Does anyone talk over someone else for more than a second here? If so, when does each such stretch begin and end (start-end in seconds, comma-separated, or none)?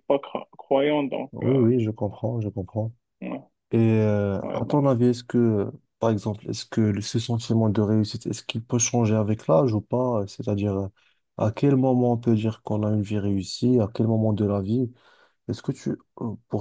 none